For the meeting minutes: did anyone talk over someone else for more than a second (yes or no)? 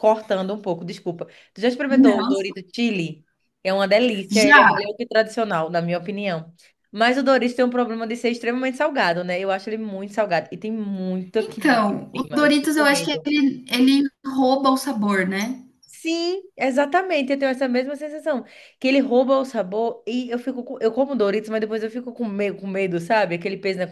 yes